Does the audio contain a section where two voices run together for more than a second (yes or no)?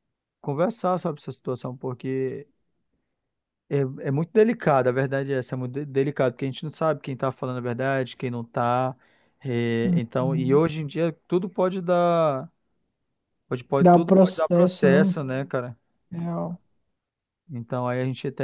yes